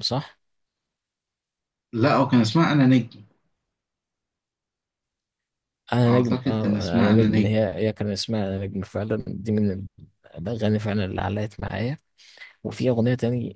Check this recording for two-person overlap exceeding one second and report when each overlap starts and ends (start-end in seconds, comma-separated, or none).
6.0-7.7